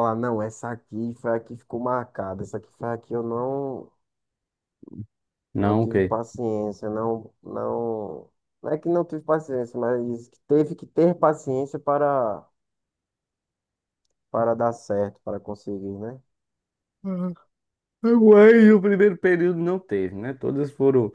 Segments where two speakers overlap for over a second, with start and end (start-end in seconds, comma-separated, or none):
none